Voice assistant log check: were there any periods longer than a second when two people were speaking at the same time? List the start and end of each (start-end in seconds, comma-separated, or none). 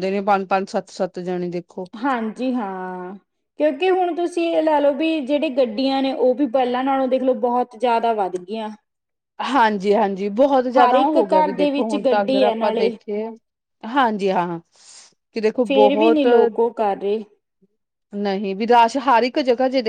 10.8-12.9